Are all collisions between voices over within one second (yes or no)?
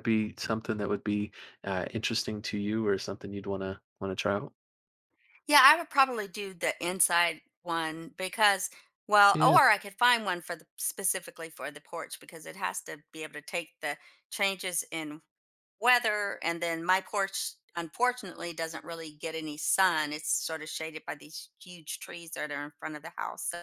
yes